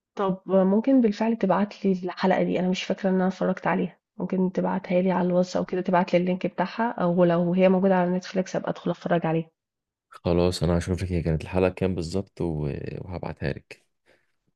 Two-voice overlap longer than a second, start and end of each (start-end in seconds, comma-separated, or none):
none